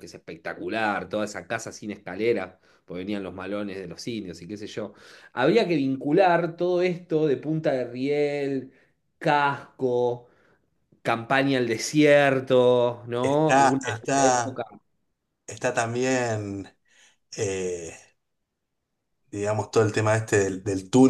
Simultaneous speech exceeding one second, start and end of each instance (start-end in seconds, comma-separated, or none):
13.2-14.6